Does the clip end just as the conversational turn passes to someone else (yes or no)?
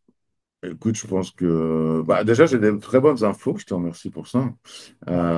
no